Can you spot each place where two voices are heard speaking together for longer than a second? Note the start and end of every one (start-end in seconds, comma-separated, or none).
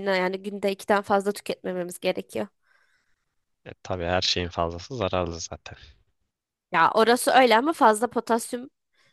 none